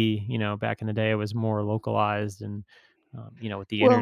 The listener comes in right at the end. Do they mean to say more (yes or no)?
no